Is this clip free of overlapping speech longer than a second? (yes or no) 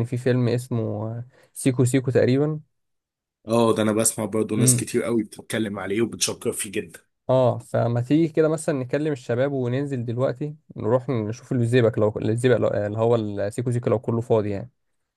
yes